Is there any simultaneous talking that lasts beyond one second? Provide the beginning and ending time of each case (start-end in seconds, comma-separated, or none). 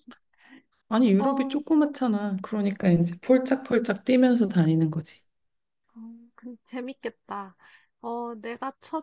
none